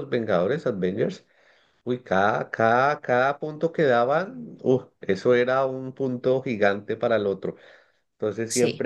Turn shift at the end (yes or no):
no